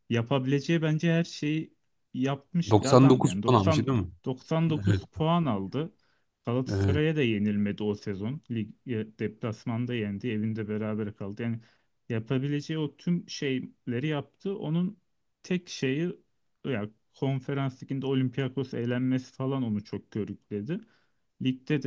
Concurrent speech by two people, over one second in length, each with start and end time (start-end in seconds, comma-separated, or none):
2.7-4.1